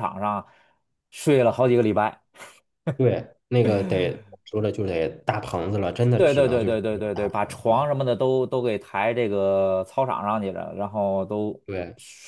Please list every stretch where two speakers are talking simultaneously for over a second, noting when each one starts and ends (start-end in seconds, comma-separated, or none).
6.2-7.9